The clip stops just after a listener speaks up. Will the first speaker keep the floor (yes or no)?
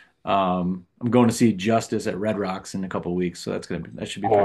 no